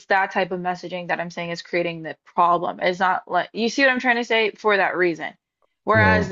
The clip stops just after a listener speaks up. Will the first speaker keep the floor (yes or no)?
yes